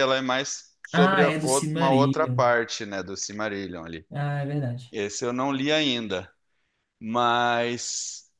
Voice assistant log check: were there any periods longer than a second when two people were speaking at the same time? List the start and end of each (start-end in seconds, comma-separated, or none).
0.9-2.4